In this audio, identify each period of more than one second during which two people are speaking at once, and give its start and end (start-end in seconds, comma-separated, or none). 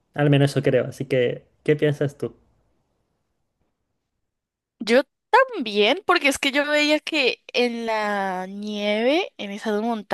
none